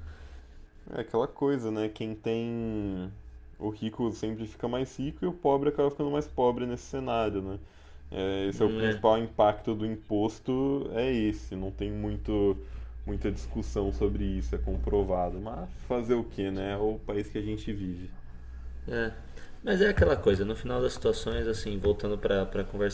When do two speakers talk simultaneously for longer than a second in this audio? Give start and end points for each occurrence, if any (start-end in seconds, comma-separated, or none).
none